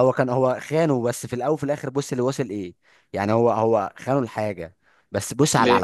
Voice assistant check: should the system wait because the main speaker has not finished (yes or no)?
yes